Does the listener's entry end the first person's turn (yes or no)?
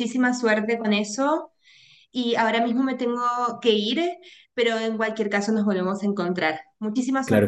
yes